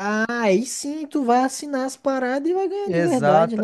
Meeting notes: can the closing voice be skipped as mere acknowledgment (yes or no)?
no